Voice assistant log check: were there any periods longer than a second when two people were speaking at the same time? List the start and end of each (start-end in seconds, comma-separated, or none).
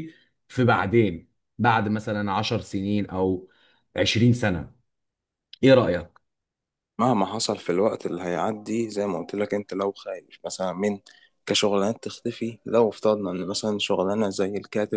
none